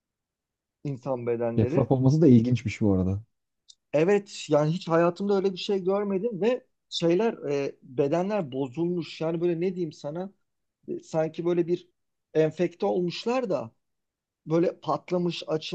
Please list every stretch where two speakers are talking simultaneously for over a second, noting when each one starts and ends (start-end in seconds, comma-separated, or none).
none